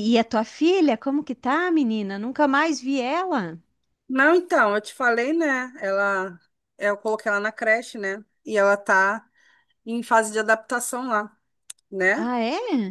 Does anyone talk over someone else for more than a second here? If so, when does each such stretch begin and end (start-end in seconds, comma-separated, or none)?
none